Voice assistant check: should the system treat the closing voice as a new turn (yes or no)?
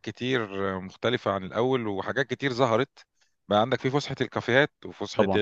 no